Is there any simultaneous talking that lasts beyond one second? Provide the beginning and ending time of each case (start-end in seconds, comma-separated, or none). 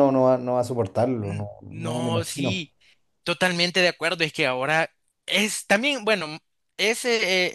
1.2-2.6